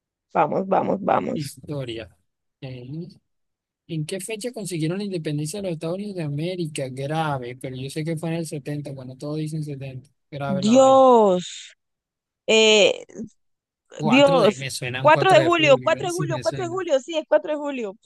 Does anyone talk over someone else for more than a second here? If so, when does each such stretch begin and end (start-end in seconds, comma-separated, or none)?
14.0-16.8